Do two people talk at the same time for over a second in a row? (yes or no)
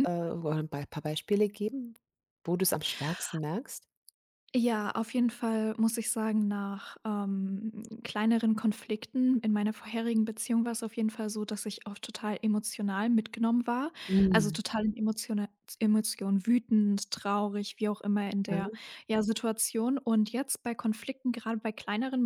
no